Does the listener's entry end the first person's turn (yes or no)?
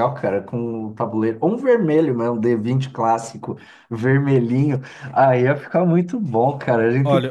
yes